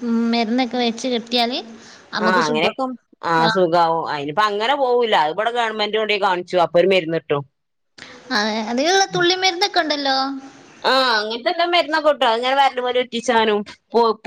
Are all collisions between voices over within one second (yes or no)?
yes